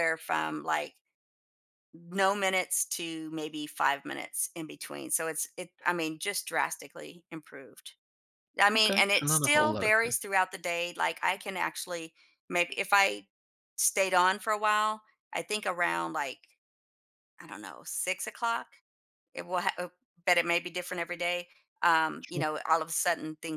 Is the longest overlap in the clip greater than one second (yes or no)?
yes